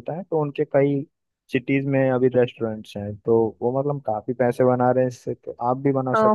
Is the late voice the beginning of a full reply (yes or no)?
yes